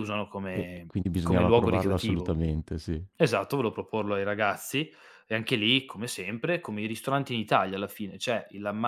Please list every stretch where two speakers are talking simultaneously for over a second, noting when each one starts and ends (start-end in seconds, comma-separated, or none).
0.5-2.4